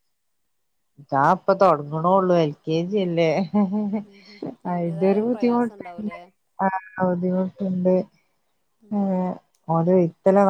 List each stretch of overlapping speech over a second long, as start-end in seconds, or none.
4.7-6.1